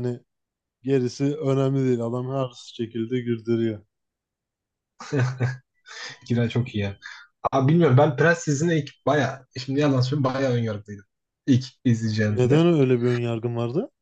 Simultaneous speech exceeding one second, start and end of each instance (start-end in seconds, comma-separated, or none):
none